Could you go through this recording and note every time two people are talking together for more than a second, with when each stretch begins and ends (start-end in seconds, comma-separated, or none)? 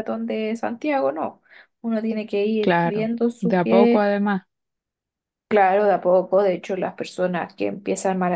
2.6-4.1